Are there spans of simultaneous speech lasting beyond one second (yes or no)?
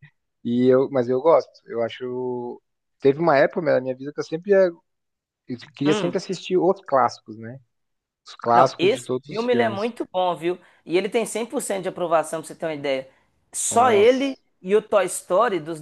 yes